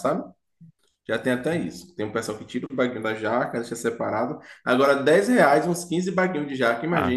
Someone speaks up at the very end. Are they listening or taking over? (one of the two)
taking over